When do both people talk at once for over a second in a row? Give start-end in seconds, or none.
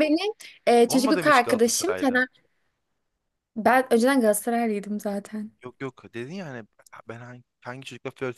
0.9-2.2